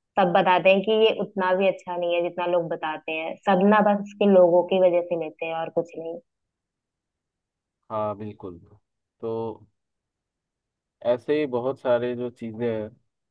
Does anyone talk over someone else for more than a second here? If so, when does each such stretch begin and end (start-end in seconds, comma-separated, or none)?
none